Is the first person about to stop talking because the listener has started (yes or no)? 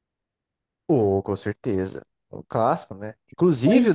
no